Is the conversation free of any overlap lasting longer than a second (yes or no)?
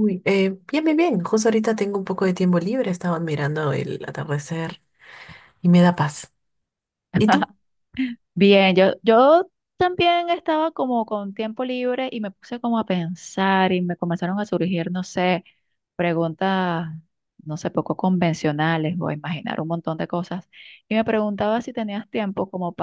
yes